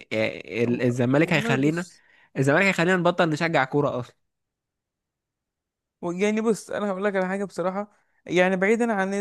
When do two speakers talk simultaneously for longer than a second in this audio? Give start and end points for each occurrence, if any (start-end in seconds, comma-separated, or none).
0.7-1.9